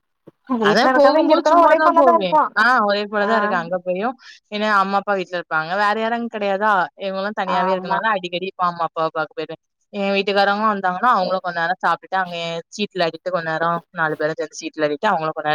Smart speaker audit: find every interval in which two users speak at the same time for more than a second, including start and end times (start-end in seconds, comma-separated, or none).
0.7-2.6